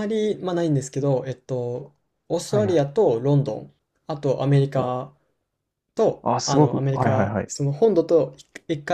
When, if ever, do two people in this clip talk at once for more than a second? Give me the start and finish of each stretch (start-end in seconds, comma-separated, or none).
6.2-7.5